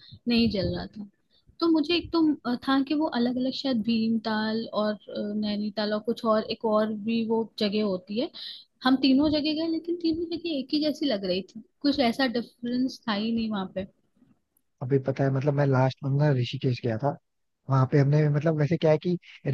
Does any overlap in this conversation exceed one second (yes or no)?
no